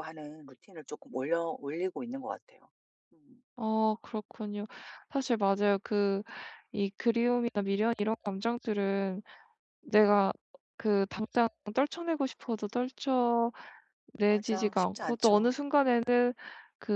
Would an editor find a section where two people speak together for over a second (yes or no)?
yes